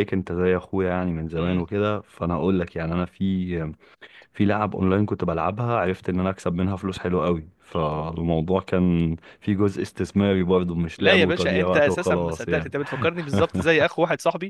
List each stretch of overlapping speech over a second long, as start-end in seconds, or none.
10.9-12.7